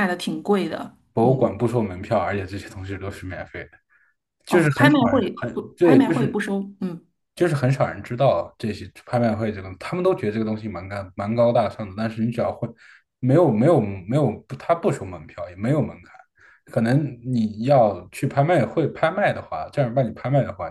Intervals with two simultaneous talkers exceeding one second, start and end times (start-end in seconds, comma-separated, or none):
4.5-6.4